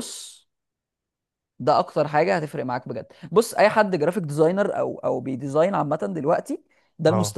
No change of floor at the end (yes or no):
yes